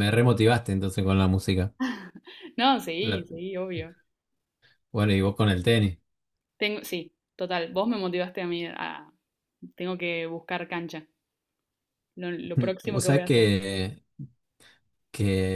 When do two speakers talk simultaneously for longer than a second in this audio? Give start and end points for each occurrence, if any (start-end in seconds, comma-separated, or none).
none